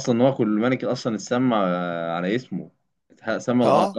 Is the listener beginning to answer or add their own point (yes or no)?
no